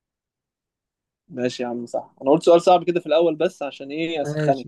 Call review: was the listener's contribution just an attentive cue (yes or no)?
no